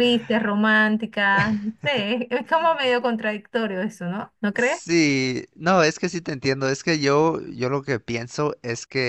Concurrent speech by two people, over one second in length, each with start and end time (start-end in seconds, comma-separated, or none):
none